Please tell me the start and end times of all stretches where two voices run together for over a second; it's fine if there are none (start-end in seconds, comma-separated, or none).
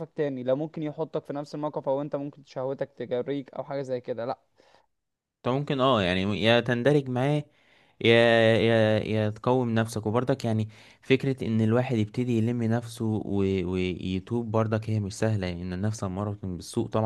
none